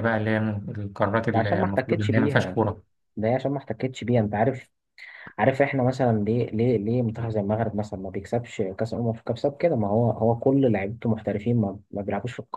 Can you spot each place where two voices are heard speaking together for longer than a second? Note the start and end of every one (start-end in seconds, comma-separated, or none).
1.3-2.6